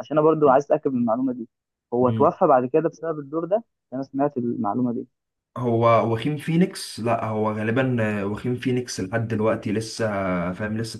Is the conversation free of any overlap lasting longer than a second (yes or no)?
yes